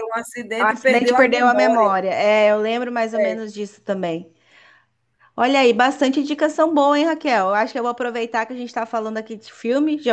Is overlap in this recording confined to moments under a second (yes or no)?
no